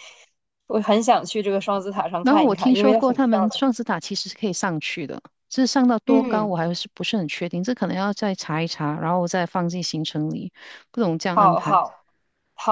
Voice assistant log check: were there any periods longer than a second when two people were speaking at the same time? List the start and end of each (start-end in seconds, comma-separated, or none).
2.2-3.6